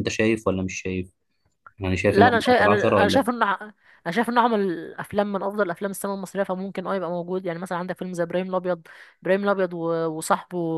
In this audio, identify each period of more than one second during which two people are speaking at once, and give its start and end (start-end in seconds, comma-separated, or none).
2.1-3.3